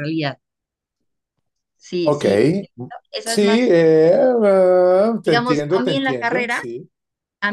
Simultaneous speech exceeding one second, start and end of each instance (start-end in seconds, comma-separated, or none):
5.2-6.6